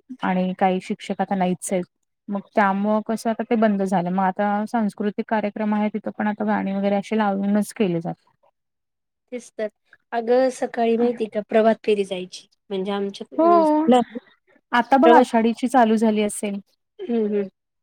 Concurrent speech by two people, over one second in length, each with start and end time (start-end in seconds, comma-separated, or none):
none